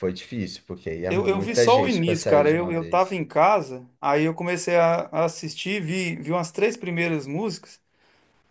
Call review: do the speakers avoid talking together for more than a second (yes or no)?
no